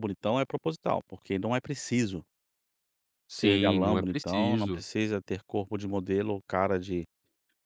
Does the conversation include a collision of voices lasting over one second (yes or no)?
yes